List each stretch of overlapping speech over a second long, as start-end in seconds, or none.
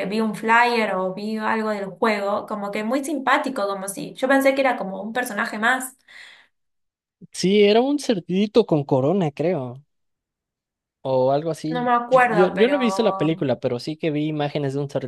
11.7-13.5